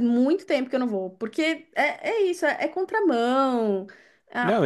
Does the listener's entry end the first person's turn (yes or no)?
yes